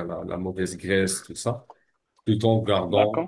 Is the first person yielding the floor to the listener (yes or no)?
no